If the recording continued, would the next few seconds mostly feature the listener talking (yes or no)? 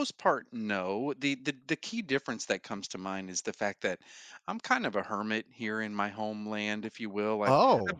no